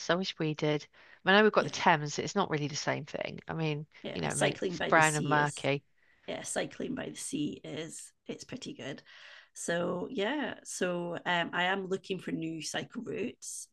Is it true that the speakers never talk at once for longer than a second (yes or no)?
no